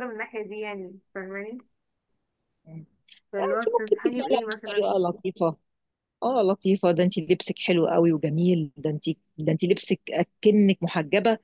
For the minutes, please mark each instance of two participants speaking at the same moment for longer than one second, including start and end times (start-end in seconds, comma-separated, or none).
3.4-4.9